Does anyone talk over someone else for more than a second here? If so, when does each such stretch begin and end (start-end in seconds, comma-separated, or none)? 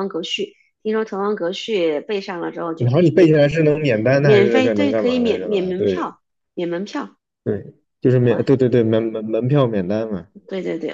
4.2-6.1